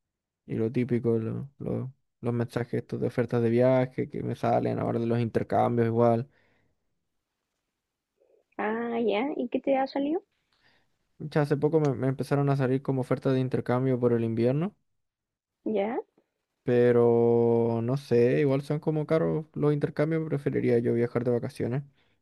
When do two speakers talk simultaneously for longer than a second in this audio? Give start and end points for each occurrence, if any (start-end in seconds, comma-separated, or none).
none